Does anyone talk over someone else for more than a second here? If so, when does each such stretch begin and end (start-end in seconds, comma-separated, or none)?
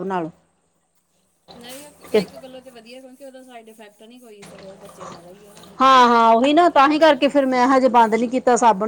6.7-8.2